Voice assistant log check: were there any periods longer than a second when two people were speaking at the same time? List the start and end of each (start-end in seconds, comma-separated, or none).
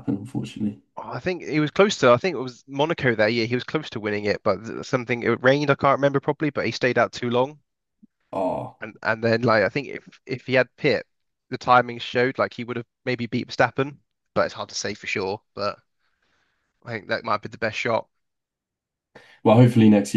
none